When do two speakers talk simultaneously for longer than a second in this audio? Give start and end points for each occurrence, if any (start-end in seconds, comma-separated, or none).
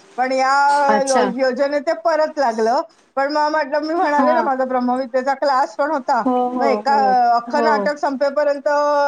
none